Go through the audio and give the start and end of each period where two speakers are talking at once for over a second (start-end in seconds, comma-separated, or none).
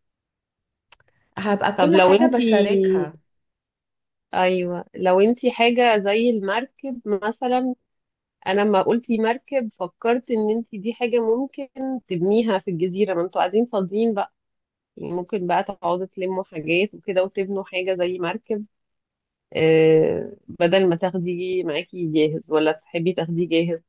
1.8-3.1